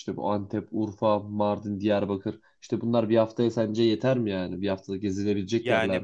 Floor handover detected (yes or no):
yes